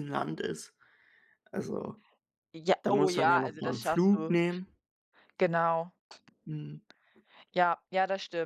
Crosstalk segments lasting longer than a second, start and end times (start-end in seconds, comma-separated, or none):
2.8-4.3